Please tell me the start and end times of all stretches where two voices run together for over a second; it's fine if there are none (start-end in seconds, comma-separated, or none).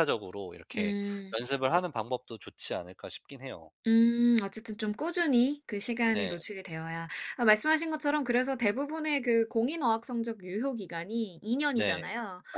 none